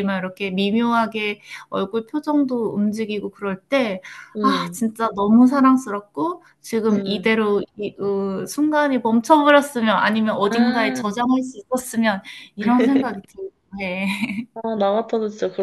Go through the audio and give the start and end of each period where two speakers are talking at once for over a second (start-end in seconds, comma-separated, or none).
none